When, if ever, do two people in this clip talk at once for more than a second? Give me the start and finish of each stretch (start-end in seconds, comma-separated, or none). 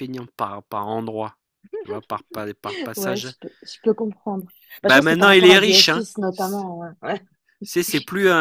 4.8-6.0